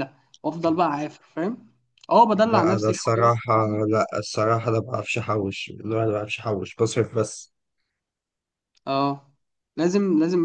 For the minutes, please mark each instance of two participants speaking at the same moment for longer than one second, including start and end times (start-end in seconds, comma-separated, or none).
2.5-3.8